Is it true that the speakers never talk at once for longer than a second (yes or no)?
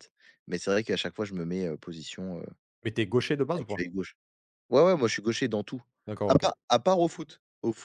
yes